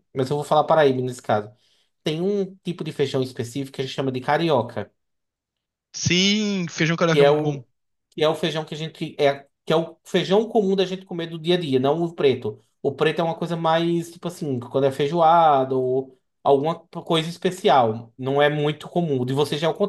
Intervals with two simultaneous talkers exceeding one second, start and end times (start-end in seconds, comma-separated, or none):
none